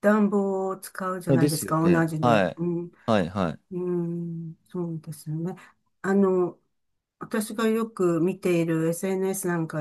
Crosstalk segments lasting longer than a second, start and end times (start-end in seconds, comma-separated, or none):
1.3-2.6